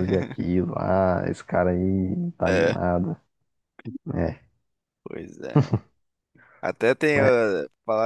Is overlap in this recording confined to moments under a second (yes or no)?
yes